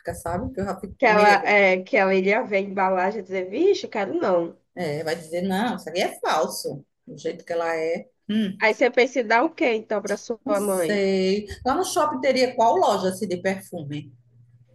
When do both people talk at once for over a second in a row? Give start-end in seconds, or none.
none